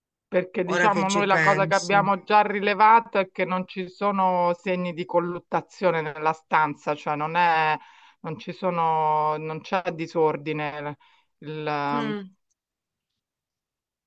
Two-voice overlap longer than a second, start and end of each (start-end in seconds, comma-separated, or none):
0.6-2.0